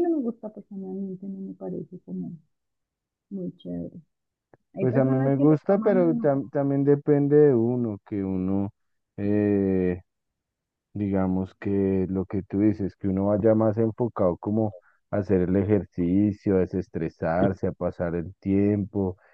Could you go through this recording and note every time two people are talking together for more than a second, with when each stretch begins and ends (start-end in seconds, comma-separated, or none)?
4.8-6.3